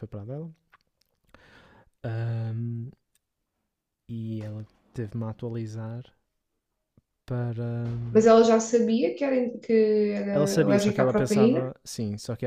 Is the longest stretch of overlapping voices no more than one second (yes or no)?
no